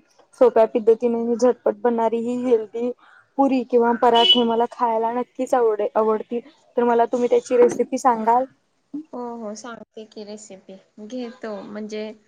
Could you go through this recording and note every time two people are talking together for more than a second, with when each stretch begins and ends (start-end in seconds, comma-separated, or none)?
none